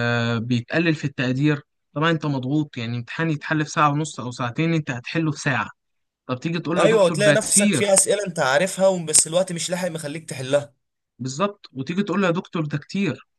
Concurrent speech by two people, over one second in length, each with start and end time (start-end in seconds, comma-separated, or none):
6.8-8.0